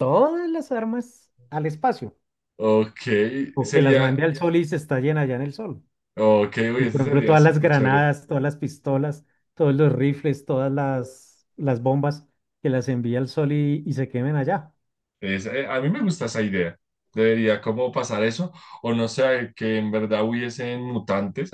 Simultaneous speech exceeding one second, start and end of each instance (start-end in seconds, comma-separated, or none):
6.8-8.1